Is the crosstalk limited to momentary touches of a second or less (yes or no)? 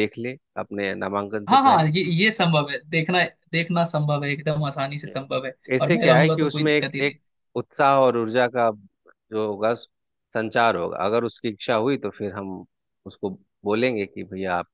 no